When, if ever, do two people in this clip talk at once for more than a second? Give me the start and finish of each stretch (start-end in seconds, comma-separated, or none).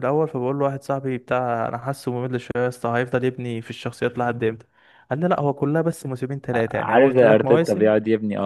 6.5-7.9